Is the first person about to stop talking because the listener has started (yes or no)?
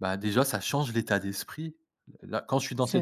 no